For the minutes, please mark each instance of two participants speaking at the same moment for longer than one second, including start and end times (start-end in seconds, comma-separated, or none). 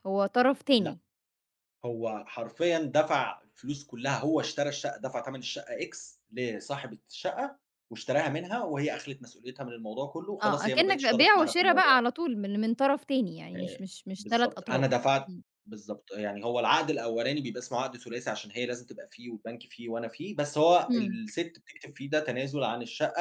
10.4-12.0, 13.6-15.4